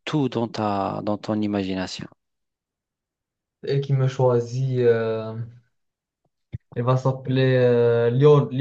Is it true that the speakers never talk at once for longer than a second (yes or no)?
yes